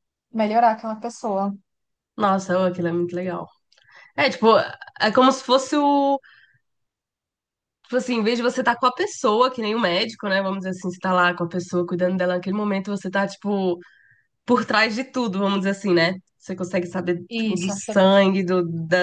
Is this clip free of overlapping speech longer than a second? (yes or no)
yes